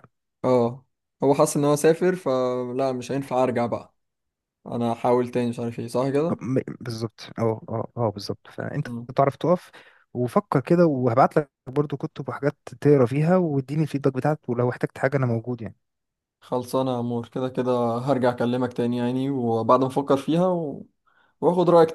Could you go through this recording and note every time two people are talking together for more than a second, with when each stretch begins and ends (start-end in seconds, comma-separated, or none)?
none